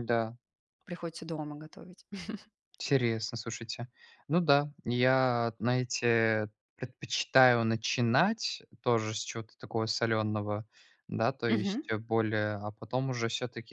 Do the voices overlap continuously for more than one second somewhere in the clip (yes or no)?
no